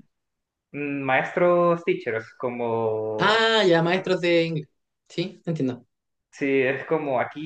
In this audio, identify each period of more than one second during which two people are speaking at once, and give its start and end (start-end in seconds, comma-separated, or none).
none